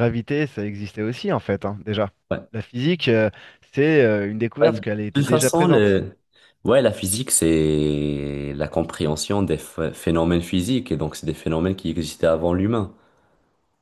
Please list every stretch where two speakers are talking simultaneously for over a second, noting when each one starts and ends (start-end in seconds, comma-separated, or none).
4.6-6.0